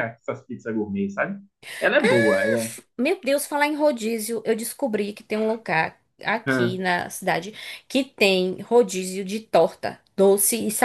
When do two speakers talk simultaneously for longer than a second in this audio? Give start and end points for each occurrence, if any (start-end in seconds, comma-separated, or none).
none